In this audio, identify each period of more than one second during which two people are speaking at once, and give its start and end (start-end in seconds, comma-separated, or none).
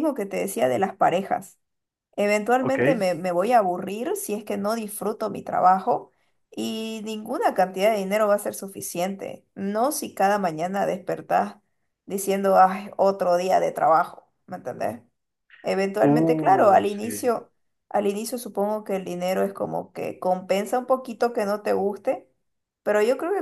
16.0-17.3